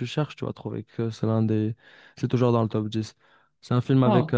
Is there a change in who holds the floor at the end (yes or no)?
no